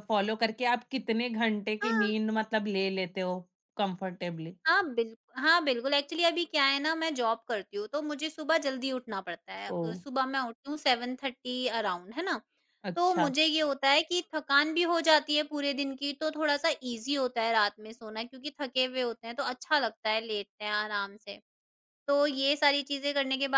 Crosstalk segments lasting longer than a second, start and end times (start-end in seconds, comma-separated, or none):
none